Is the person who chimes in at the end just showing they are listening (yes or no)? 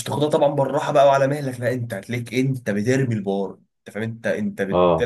yes